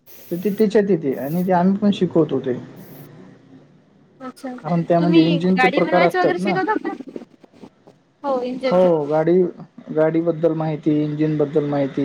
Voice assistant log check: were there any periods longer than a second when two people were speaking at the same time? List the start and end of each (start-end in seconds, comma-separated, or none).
5.0-6.5